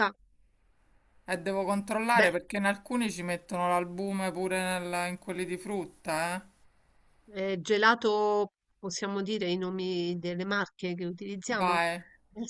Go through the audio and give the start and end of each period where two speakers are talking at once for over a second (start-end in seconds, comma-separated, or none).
none